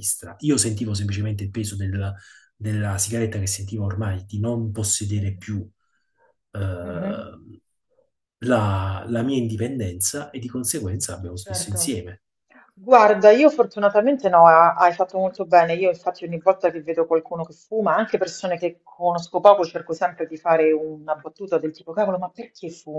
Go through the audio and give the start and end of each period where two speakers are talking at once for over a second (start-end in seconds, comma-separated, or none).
none